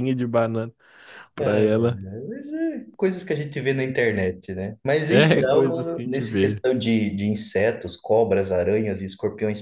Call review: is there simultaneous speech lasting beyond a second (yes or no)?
yes